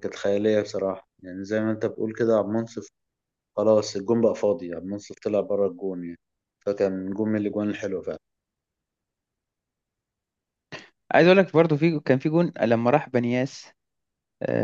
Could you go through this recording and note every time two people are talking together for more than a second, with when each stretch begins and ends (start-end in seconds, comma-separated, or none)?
none